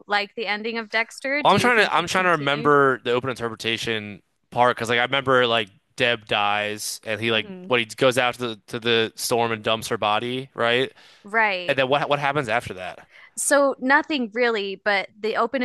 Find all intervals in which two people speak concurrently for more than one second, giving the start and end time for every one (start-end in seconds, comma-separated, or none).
1.4-2.7